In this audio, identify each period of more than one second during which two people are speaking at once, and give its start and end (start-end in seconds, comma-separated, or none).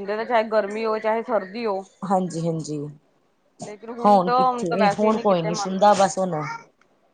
4.3-6.0